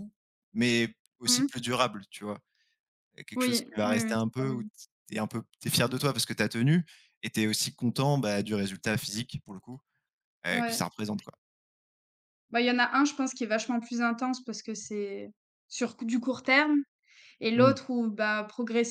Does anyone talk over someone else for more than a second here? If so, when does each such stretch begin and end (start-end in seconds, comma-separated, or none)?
3.4-4.6